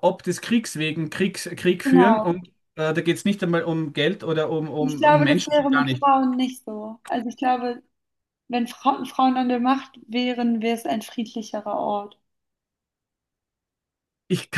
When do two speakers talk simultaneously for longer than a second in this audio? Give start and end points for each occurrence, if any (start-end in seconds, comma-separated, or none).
4.8-6.1